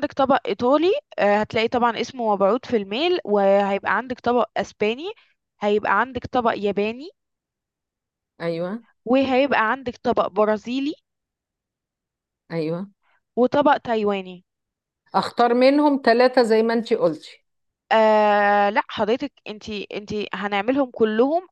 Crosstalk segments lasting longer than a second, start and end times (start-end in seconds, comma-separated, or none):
none